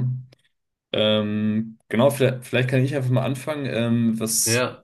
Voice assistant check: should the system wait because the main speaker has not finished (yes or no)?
yes